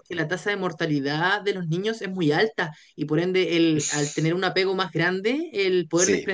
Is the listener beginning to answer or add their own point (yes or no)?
no